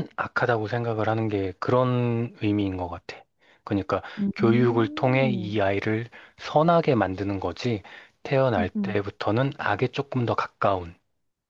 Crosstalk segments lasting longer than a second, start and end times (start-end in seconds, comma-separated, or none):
4.2-5.6